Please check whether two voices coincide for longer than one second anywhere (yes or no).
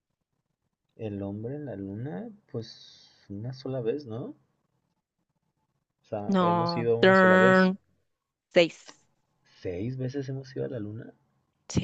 yes